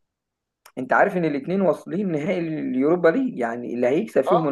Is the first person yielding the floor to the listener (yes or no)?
no